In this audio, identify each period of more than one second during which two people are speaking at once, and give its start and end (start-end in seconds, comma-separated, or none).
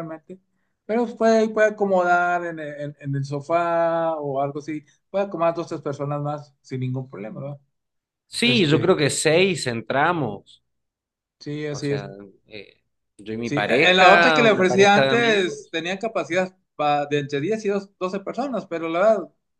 13.4-15.8